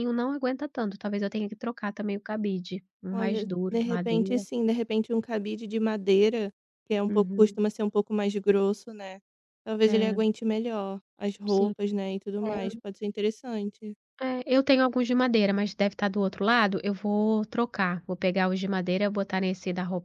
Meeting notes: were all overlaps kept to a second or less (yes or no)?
no